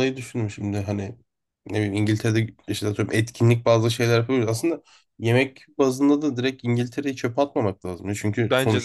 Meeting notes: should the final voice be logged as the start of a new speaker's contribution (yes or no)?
no